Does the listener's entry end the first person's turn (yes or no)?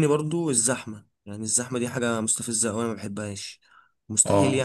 no